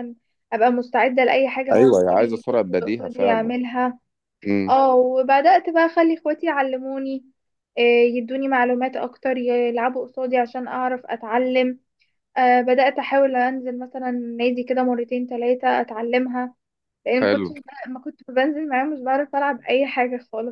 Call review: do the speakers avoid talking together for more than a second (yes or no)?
no